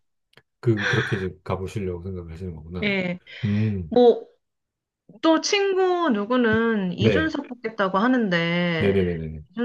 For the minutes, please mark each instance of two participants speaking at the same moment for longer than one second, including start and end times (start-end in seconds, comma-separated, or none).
none